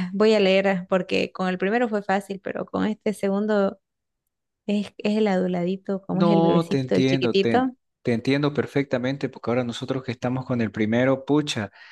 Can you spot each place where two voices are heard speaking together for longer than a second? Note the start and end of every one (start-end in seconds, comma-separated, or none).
6.1-7.8